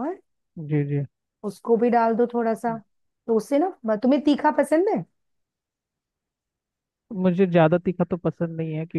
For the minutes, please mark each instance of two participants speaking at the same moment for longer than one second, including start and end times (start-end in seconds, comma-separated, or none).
none